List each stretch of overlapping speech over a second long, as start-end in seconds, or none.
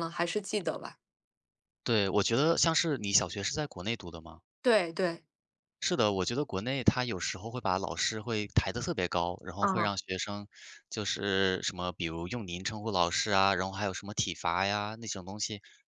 none